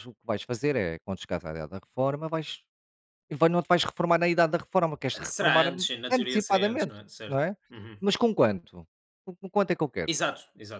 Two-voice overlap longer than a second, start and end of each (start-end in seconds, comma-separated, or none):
5.2-7.5